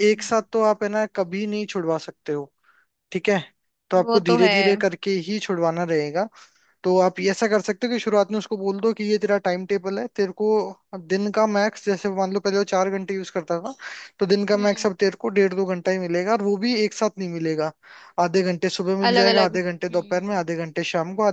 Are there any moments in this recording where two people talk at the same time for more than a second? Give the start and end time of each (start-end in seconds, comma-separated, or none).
19.1-20.4